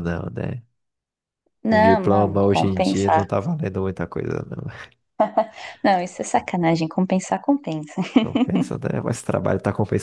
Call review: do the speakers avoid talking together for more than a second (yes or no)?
no